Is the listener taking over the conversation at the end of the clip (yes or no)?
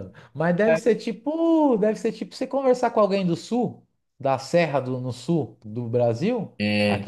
no